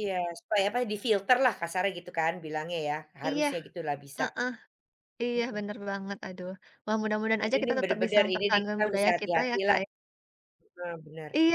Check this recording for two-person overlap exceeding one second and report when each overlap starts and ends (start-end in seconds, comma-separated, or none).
7.4-9.8